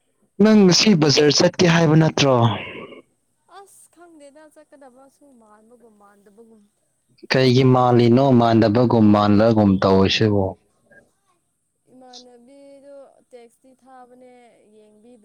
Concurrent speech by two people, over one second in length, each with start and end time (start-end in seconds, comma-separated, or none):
none